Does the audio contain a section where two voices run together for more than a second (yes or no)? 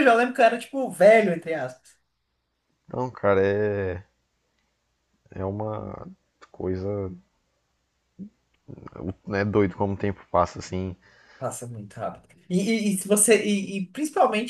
no